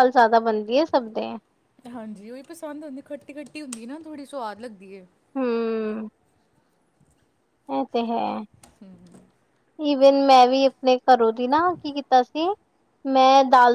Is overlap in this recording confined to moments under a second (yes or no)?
yes